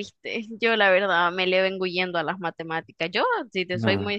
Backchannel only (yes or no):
yes